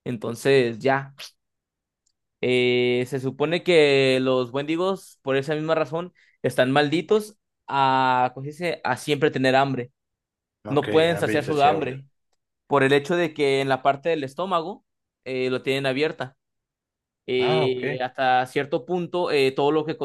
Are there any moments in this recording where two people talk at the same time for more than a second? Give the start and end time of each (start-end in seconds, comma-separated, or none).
10.7-12.0